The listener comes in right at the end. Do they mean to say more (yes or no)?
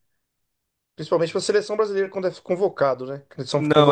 no